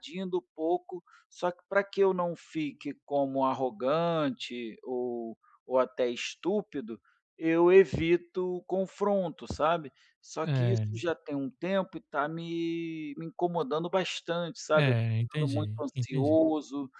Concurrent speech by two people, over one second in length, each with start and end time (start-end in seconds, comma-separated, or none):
14.7-16.4